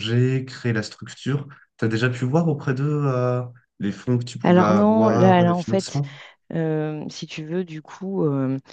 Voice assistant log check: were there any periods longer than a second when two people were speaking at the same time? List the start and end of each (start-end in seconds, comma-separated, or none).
4.4-6.0